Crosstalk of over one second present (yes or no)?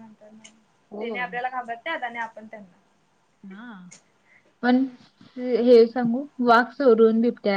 no